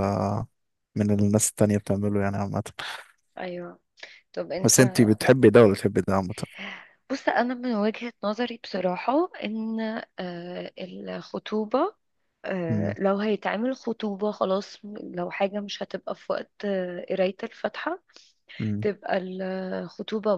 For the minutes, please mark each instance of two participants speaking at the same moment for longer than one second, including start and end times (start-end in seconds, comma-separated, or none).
none